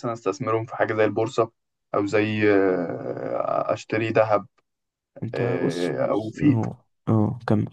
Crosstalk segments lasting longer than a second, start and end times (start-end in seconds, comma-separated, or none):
5.3-6.6